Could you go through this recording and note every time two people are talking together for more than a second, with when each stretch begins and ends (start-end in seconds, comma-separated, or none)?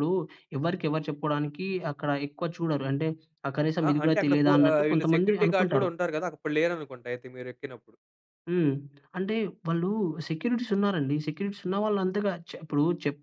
3.9-5.9